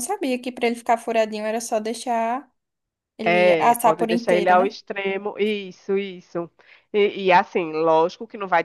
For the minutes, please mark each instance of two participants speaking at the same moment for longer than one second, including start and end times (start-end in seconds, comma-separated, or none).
3.2-4.8